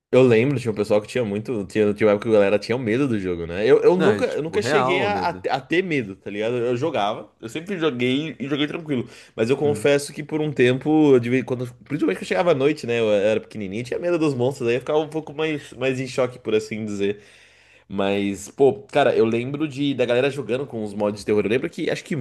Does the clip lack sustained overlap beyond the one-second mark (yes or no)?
no